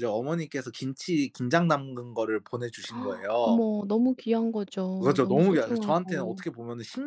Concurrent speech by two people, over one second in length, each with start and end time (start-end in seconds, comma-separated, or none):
5.0-6.4